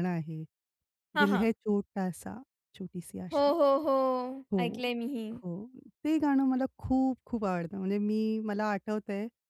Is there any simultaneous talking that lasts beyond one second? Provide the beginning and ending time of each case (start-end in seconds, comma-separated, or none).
none